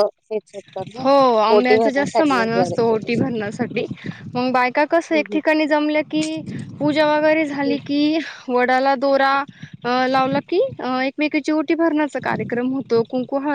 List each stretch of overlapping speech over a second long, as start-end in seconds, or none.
1.5-2.8